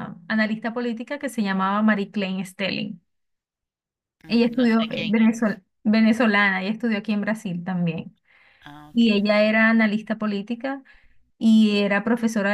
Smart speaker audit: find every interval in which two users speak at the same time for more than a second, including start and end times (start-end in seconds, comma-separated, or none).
4.3-5.6